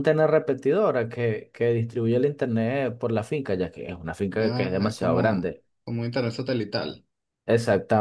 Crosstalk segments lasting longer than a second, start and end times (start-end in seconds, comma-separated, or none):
4.4-5.6